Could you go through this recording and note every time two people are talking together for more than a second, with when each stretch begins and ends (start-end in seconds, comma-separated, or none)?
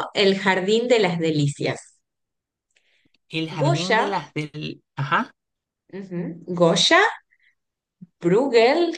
none